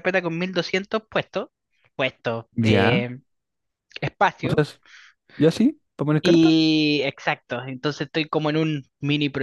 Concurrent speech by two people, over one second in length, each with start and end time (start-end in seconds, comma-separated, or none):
none